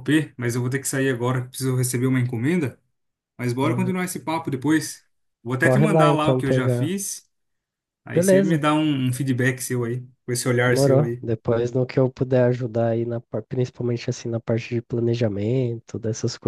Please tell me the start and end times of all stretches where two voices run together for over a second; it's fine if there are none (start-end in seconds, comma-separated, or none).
5.6-6.9